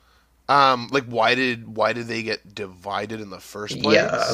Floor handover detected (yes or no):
yes